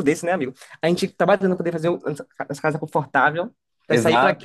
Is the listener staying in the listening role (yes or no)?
no